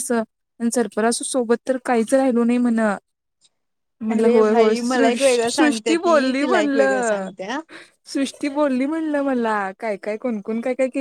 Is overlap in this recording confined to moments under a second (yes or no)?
no